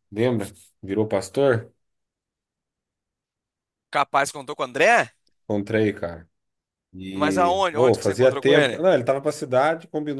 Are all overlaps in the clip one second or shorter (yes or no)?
no